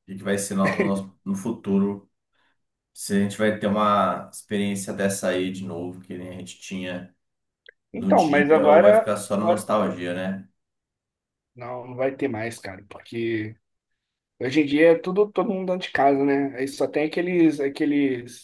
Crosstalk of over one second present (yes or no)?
yes